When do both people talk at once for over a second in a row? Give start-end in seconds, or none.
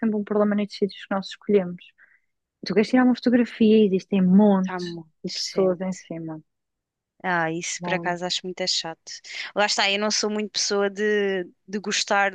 4.6-6.0